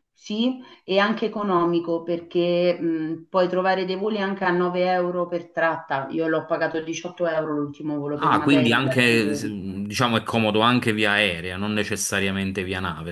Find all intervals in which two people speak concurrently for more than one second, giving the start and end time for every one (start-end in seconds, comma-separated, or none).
8.2-9.5